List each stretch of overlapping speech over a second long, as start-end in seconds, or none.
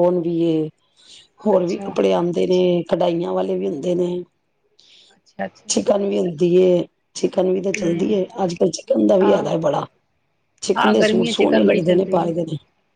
10.8-12.3